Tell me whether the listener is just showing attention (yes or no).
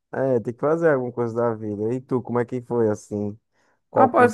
no